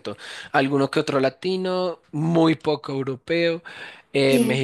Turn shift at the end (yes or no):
no